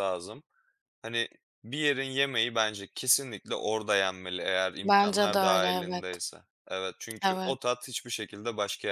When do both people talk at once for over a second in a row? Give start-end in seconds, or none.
4.8-6.0